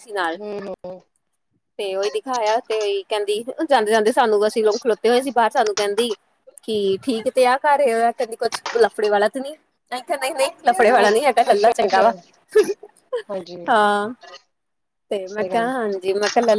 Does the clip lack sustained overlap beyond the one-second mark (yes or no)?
yes